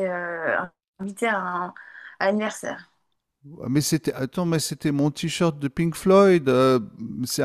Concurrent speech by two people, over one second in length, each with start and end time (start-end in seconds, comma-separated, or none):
none